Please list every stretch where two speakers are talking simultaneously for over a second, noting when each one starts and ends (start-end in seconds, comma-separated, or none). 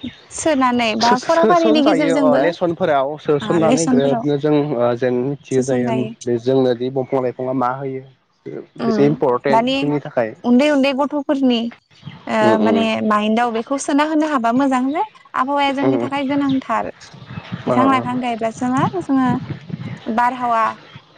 1.0-2.4